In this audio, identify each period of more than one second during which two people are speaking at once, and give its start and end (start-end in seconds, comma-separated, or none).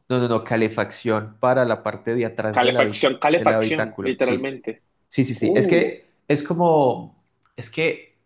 2.5-4.5